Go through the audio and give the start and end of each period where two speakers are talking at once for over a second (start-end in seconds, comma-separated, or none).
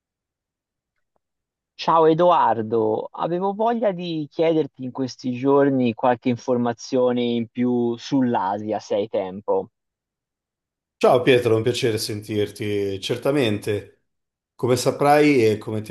none